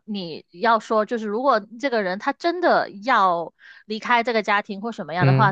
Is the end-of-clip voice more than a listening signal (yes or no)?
no